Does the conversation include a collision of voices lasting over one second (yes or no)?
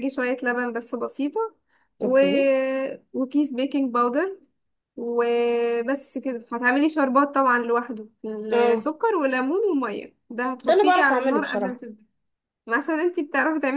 yes